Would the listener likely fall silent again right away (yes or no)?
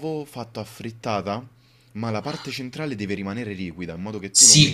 no